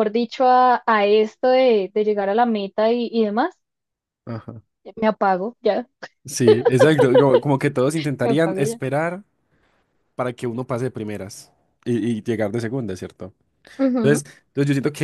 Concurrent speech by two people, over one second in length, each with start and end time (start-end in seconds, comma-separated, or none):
none